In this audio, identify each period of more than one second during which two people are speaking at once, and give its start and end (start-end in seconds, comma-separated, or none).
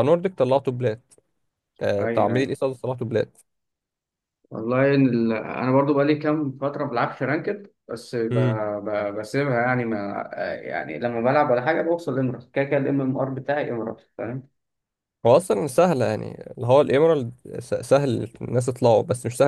none